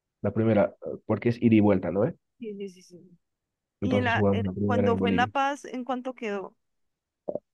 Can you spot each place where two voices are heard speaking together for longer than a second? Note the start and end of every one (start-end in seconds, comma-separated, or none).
3.8-5.3